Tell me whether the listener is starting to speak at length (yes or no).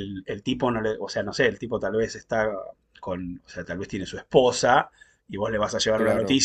no